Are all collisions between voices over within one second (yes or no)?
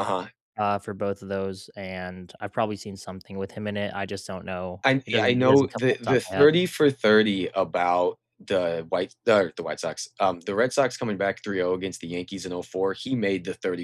no